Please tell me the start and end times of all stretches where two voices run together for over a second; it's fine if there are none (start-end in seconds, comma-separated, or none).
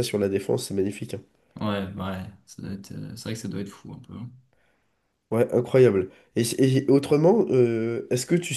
none